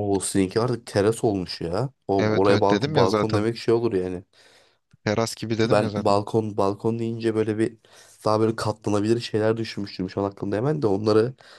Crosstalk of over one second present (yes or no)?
yes